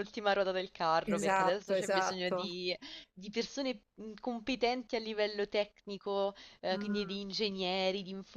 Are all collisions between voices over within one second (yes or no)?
no